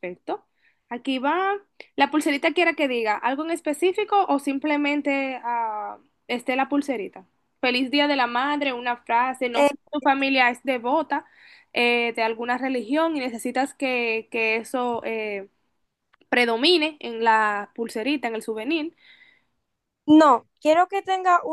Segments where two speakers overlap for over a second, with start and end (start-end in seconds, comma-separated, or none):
none